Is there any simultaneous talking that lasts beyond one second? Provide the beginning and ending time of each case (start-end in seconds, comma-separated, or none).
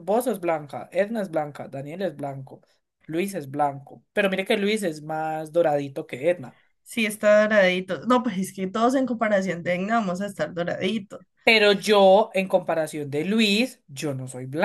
none